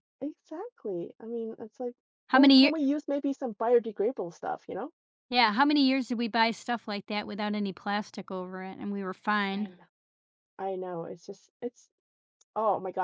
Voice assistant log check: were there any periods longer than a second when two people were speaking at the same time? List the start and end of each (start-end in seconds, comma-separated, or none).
none